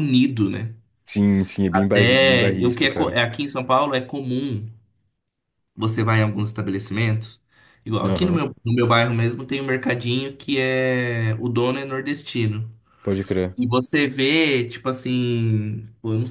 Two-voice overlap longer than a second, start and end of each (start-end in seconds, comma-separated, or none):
1.7-3.2